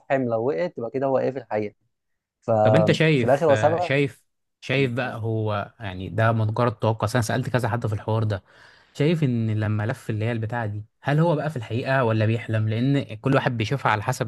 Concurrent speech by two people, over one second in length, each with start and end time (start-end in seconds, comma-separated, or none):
2.6-3.9